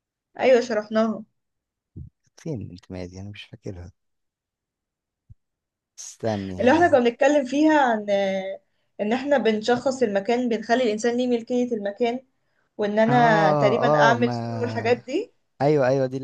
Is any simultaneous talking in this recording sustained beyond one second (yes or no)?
yes